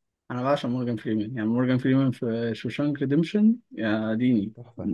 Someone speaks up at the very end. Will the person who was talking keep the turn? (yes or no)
no